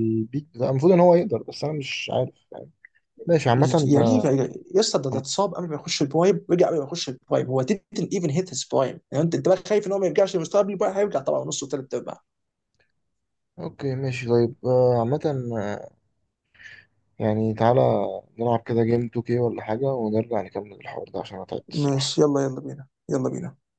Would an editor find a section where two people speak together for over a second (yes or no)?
no